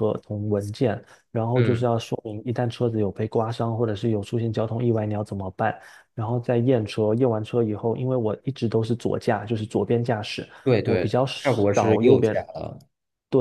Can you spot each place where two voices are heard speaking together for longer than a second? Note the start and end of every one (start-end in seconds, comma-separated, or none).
10.8-12.4